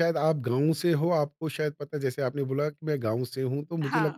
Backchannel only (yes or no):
yes